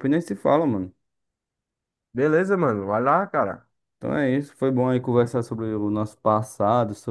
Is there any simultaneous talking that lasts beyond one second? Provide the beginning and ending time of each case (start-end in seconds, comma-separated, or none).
none